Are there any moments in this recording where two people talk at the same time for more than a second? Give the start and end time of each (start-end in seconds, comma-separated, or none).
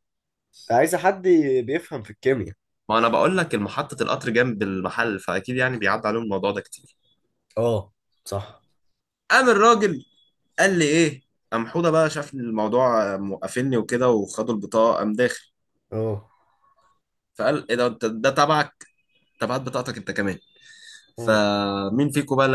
none